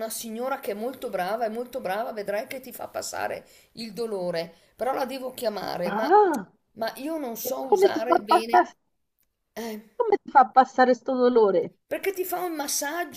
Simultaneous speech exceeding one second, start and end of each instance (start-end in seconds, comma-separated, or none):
7.4-8.7